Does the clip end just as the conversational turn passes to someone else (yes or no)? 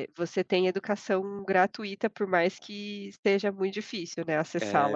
yes